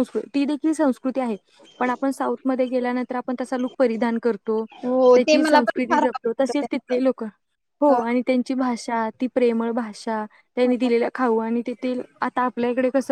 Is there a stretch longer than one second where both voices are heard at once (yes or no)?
yes